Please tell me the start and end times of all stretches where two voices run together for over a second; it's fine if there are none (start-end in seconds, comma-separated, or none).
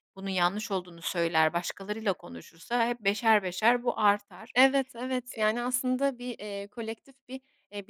none